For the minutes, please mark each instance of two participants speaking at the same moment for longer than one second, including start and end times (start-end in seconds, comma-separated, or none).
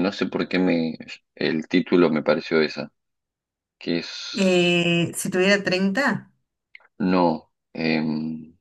none